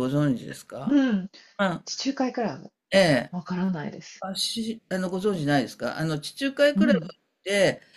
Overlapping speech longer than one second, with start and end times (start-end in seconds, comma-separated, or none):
none